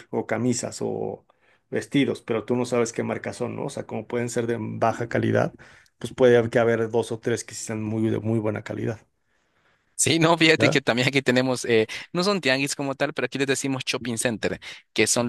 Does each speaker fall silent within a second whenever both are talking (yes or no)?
yes